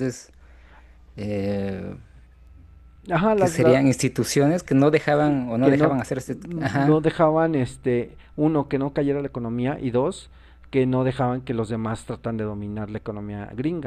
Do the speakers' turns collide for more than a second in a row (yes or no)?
yes